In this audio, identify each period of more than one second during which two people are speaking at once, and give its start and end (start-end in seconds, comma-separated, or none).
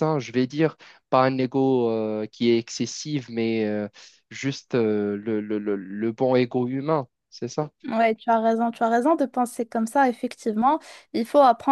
none